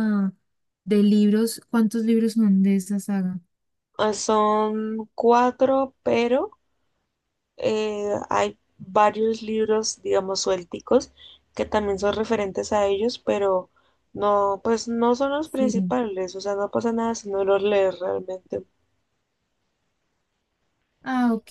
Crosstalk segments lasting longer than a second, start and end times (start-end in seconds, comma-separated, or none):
none